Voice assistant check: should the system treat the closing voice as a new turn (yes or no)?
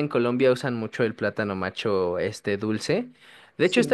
no